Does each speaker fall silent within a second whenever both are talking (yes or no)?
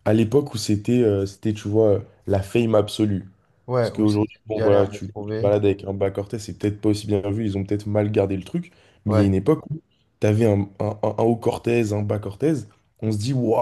no